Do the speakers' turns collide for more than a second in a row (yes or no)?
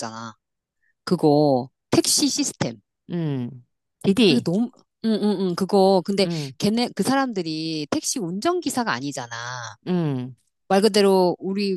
no